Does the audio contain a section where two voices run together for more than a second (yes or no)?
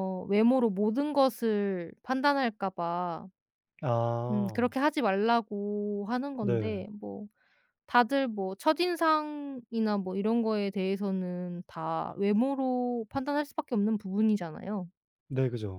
no